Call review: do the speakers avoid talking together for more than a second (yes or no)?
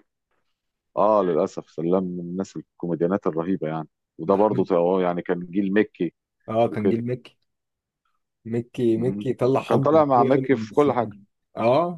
no